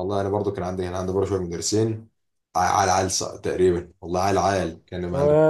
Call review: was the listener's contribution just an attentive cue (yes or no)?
no